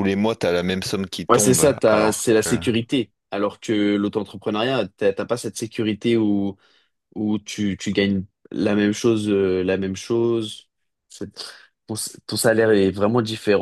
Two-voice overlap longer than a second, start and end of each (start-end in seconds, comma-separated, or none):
1.3-2.6